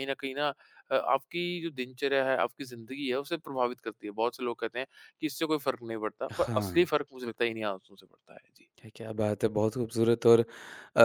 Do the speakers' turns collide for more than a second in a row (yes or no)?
no